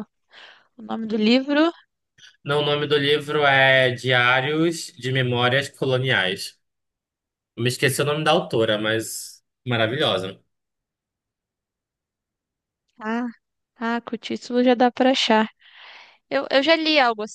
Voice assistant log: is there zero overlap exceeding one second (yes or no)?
yes